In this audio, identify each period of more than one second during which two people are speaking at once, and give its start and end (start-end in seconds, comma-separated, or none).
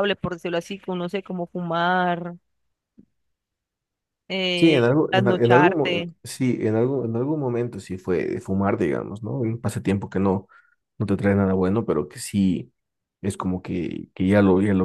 4.5-6.1